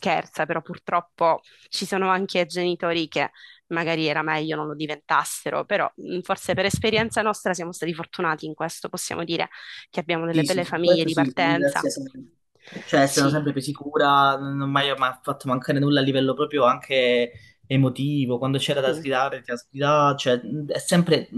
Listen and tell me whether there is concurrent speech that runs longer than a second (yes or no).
yes